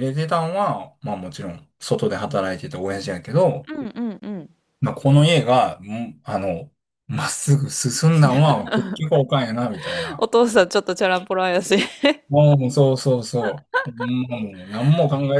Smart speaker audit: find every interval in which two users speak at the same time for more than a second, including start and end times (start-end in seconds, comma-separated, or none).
none